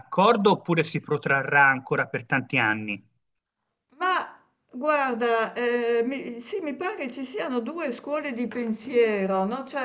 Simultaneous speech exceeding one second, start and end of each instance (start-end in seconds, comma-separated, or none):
none